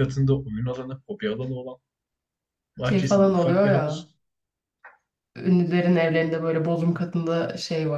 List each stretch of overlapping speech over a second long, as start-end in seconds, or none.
2.8-4.1